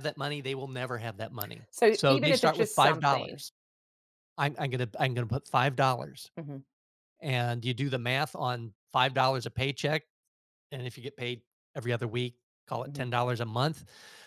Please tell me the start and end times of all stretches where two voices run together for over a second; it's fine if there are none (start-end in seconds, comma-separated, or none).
1.7-3.4